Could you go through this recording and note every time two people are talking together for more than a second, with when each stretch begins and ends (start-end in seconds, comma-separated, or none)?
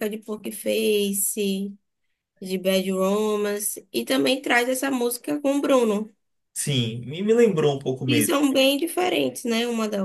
none